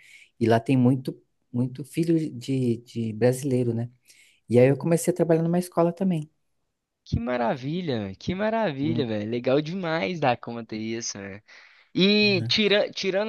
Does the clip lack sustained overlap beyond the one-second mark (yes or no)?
yes